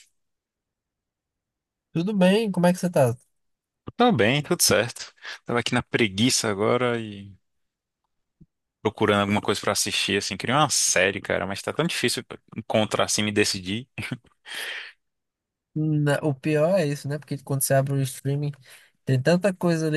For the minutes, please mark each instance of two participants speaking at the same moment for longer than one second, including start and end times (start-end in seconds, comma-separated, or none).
none